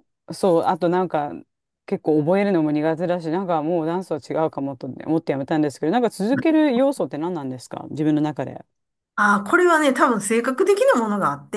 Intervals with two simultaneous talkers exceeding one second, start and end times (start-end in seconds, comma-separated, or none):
none